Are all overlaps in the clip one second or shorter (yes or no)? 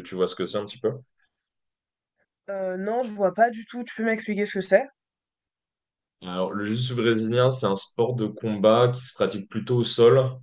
yes